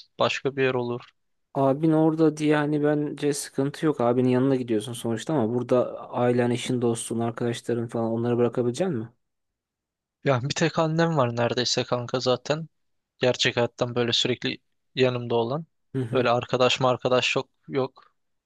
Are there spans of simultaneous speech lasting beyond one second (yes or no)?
no